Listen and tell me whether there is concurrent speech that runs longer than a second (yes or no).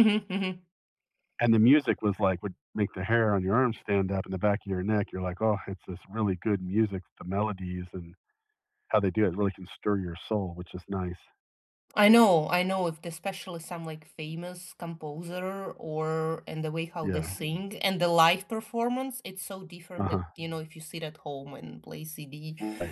no